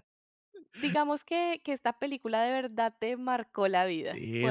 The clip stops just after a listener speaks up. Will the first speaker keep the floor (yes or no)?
no